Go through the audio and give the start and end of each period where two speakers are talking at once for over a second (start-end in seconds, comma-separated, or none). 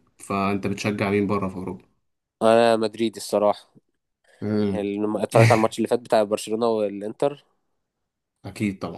none